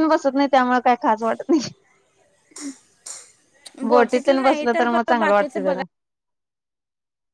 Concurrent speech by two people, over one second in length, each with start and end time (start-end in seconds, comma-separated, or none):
3.9-5.8